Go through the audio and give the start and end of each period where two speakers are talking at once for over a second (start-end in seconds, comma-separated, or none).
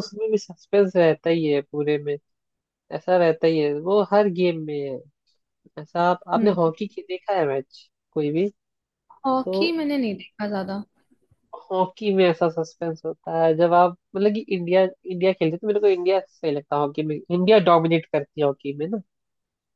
none